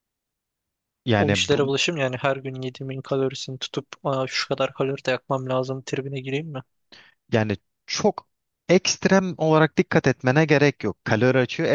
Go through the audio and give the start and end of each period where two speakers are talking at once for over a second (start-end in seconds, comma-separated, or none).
none